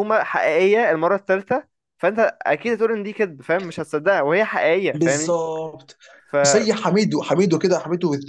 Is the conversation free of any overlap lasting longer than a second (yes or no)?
yes